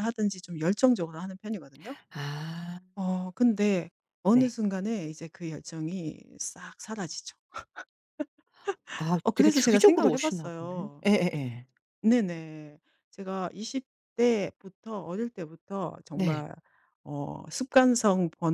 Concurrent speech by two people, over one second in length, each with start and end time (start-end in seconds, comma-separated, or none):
9.2-11.0